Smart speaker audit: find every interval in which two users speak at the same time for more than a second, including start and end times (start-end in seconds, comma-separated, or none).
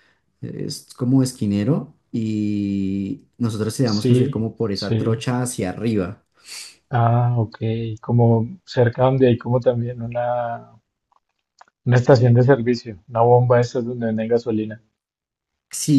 4.0-5.2